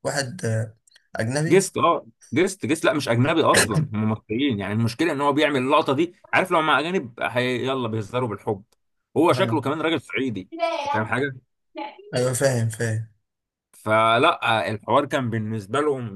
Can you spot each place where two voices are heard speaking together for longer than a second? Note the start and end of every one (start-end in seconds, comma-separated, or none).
none